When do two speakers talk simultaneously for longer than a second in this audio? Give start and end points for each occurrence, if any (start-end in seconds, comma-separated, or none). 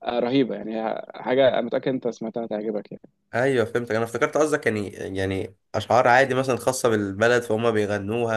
none